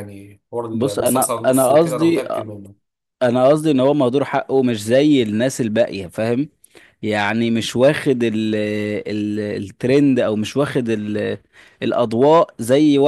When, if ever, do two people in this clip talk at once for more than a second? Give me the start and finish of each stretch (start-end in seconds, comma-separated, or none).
0.7-2.2